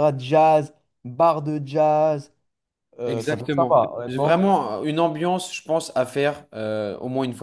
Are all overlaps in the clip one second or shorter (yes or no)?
no